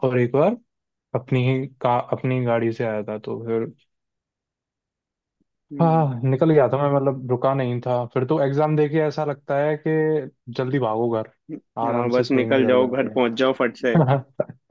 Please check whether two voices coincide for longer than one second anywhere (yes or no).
yes